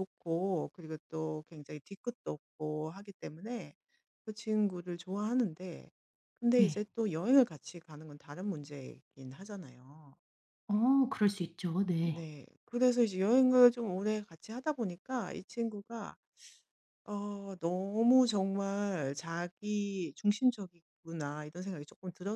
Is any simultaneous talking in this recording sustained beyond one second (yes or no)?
no